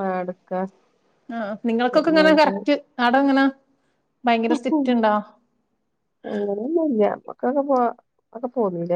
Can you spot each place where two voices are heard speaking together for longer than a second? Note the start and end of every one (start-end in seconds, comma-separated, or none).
none